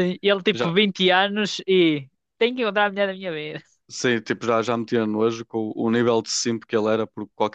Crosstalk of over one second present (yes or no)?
no